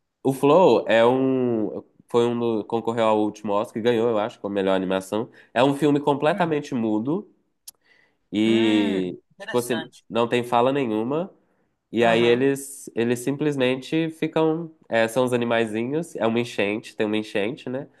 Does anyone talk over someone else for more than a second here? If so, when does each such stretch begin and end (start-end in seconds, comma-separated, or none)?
8.4-10.0